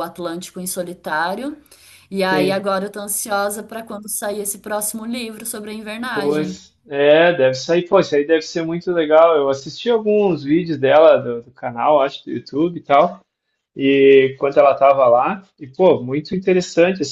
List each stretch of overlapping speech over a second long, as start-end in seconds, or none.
none